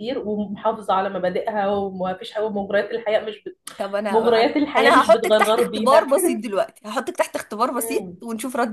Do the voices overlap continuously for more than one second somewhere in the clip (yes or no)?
yes